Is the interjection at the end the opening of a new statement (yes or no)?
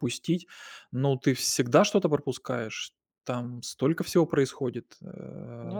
no